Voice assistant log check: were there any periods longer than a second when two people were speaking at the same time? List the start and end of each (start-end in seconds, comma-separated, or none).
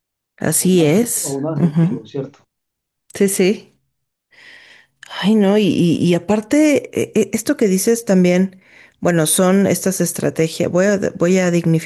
0.6-2.0